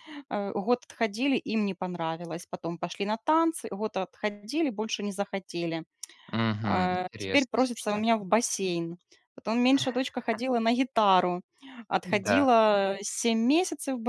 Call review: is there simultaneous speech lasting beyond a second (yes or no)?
yes